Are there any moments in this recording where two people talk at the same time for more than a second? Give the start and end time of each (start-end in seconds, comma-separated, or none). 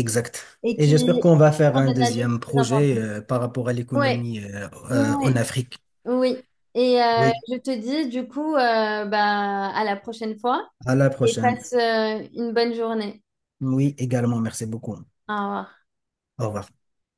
1.7-3.0